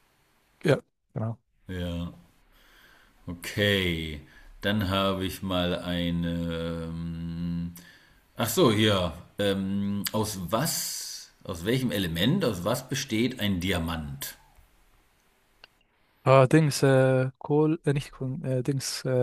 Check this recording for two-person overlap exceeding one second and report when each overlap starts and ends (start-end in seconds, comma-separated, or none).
none